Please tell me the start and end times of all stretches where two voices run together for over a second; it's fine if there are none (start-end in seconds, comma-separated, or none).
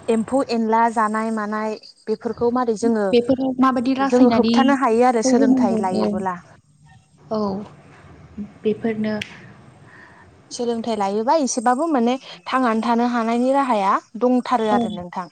4.1-6.0